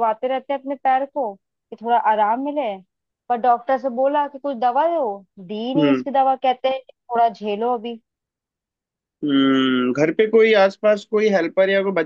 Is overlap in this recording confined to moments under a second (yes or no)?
yes